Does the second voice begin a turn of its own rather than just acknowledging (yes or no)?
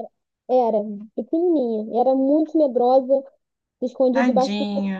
no